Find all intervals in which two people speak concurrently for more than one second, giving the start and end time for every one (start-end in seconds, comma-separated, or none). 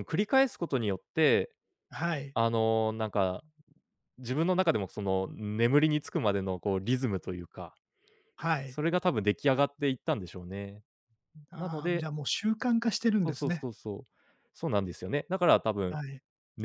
none